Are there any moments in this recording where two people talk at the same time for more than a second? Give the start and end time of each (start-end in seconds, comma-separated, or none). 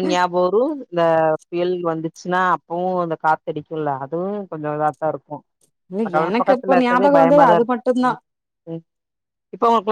6.1-8.1